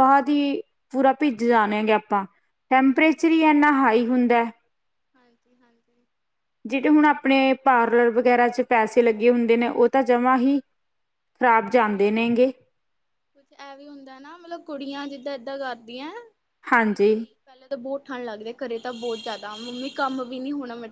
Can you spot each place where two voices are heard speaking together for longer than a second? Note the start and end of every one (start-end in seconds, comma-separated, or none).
none